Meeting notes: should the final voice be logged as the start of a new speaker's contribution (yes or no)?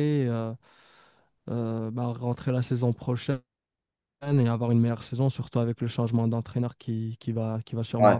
yes